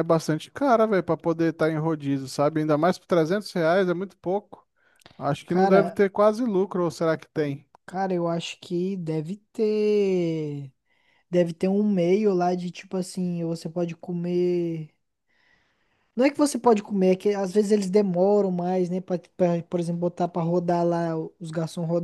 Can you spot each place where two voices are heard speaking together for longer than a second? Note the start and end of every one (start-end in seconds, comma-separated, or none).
none